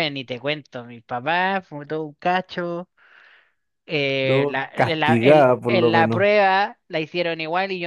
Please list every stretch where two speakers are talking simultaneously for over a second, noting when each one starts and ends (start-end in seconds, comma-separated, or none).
4.2-6.2